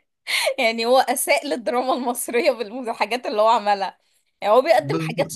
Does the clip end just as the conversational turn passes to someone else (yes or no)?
no